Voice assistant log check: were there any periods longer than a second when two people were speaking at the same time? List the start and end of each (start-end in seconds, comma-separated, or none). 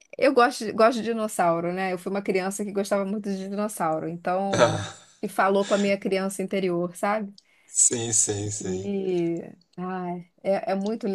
none